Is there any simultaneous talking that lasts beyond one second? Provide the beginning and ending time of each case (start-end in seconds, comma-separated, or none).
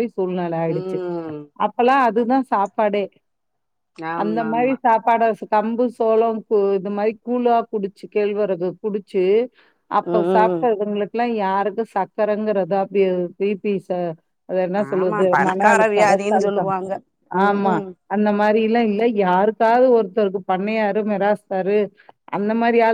15.0-16.7